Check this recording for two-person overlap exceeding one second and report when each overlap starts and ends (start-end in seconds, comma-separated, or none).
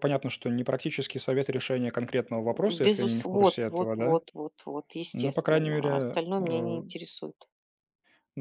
2.7-4.2, 5.1-6.8